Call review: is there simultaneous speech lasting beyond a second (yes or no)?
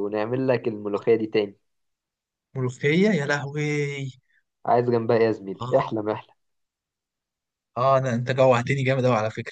no